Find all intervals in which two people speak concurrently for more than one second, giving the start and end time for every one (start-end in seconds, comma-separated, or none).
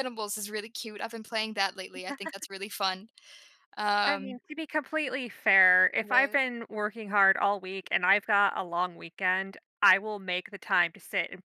none